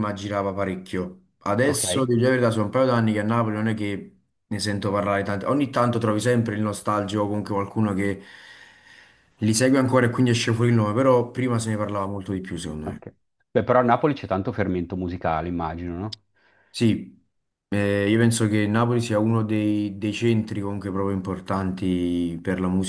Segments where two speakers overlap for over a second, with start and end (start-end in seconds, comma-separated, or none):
none